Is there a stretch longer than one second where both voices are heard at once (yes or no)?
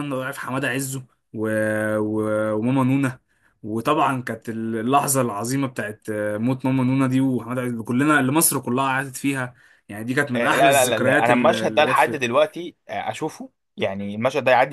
yes